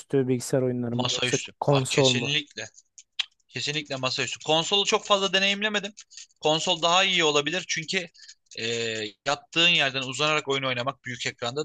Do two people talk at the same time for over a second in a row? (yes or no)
yes